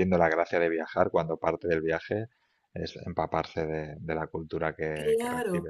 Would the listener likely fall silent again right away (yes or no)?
no